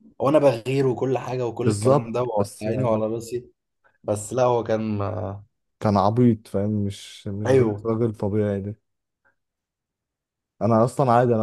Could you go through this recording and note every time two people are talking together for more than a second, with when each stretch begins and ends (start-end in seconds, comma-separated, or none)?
1.6-3.0